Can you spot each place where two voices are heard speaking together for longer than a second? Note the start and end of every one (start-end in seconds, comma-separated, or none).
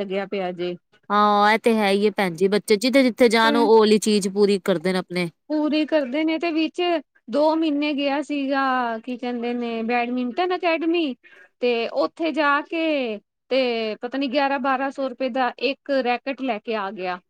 none